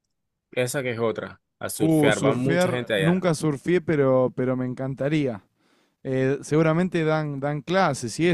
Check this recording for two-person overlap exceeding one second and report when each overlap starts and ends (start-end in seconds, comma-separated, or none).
1.8-3.2